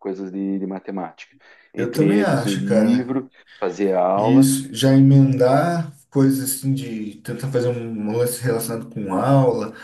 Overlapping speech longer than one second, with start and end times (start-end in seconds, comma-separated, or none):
1.8-3.1